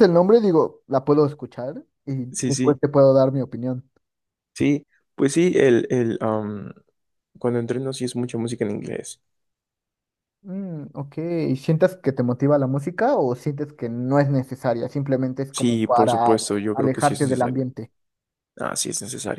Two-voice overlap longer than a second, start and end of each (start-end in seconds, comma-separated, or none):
15.5-17.6